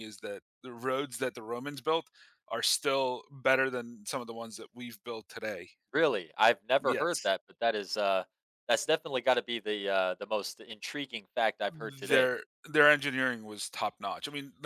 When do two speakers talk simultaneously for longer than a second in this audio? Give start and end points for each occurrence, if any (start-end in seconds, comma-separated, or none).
none